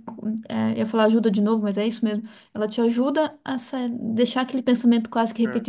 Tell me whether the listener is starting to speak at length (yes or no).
no